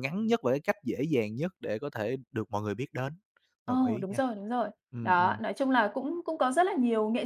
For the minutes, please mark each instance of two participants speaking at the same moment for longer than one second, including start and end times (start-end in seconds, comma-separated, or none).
none